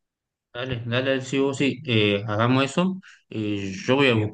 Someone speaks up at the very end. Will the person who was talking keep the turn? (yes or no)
yes